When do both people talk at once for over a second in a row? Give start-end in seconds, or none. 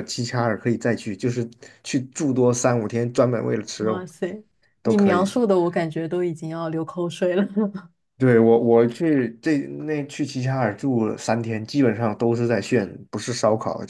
none